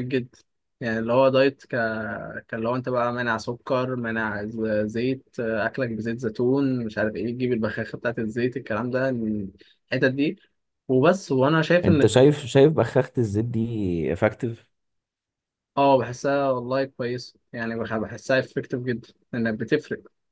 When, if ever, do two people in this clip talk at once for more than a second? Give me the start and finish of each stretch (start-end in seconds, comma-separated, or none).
none